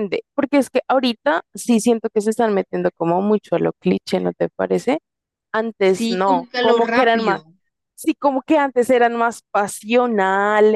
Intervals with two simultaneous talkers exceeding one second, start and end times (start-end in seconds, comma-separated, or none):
5.8-7.4